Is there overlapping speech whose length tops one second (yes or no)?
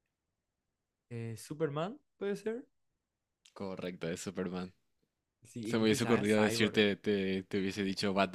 yes